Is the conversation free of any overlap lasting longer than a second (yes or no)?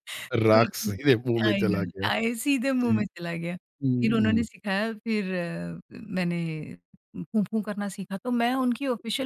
no